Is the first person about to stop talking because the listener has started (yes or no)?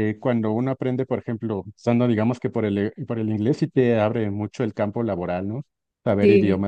yes